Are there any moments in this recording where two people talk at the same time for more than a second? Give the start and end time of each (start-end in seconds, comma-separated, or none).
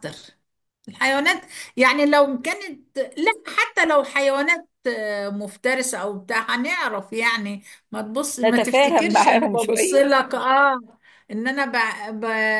8.4-10.1